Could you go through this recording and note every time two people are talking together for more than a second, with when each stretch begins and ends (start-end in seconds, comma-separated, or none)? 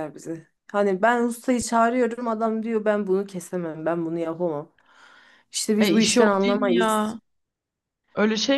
5.8-7.2